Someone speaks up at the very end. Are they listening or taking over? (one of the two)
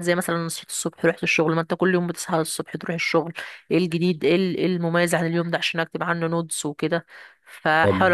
taking over